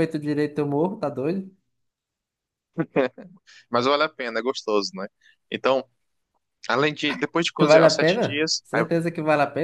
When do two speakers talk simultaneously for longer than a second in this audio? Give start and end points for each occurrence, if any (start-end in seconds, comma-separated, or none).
7.6-8.8